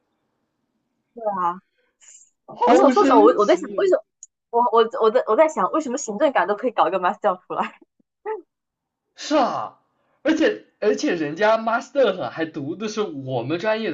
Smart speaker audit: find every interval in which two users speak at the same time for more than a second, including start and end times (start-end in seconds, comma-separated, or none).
2.6-3.9